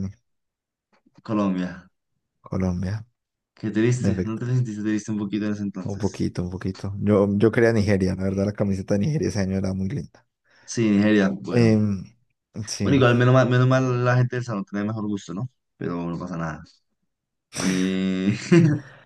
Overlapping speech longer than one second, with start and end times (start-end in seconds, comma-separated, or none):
none